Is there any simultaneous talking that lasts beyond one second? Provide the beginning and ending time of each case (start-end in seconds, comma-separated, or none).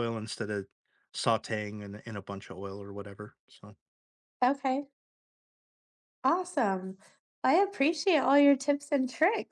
none